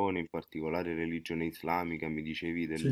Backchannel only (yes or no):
yes